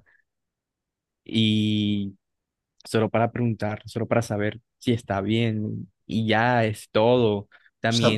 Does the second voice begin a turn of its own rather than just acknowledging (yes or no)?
no